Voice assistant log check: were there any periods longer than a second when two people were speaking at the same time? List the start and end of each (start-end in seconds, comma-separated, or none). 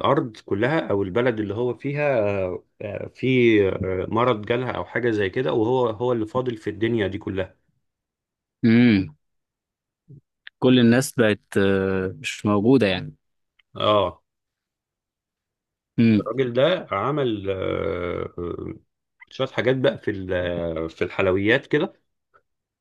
none